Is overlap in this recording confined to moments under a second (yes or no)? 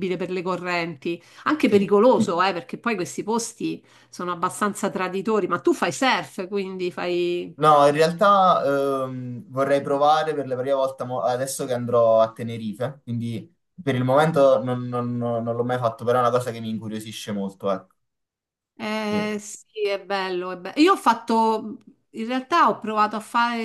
yes